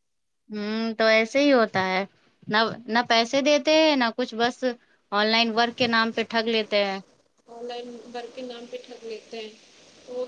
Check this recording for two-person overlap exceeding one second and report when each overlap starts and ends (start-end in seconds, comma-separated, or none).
none